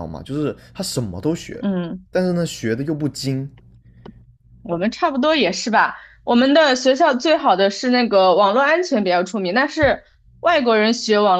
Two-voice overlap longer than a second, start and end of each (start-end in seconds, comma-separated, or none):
none